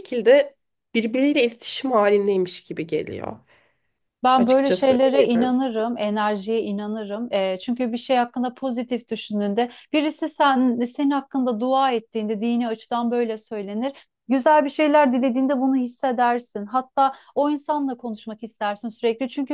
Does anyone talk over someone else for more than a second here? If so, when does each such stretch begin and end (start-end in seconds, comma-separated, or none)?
4.4-5.6